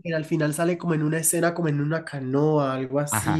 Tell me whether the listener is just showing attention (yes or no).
yes